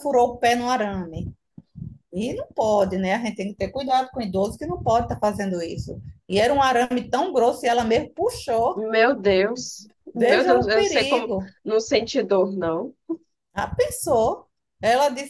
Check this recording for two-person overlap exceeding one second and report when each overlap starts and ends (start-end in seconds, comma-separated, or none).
10.1-11.6